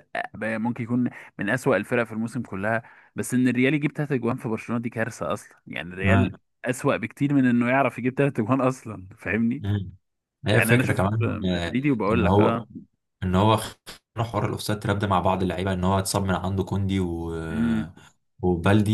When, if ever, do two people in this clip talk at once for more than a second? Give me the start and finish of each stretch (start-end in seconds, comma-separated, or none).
10.5-12.6